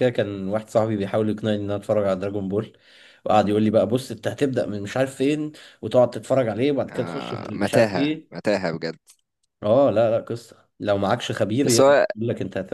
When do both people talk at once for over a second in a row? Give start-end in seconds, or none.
6.9-8.3